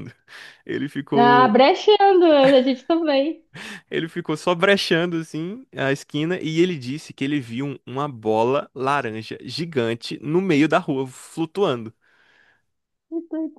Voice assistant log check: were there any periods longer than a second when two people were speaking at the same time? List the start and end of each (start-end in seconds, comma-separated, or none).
none